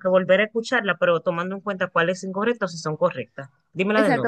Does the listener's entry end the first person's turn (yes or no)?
yes